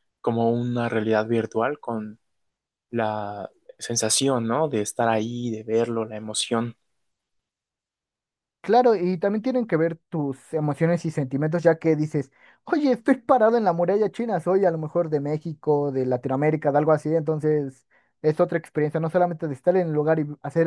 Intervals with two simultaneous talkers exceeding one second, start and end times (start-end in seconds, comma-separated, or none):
none